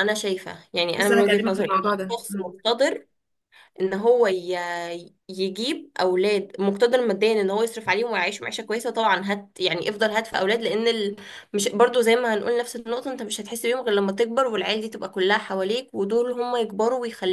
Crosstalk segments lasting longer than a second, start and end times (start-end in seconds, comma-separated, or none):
1.0-2.5